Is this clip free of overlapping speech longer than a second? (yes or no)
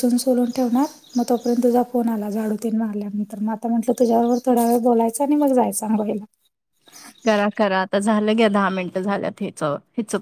yes